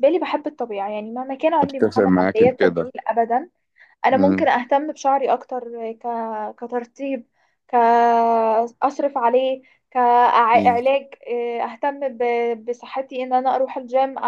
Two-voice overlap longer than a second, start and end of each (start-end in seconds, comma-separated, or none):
1.6-2.9